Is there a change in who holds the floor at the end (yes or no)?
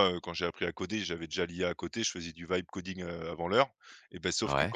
no